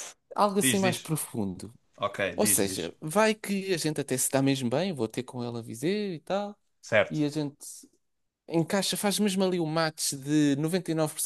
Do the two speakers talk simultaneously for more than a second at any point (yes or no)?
no